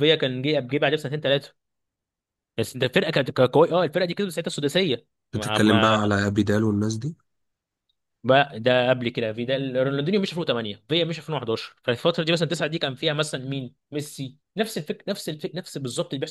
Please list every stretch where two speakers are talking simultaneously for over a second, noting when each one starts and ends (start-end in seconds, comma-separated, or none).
none